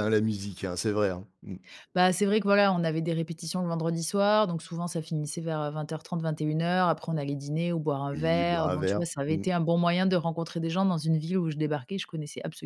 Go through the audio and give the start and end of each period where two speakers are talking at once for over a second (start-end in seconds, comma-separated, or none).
8.1-9.4